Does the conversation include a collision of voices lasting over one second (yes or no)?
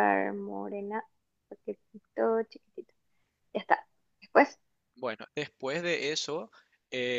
no